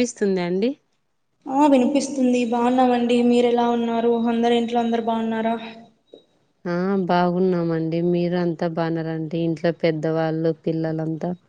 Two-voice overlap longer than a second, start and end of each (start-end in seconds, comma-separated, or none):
none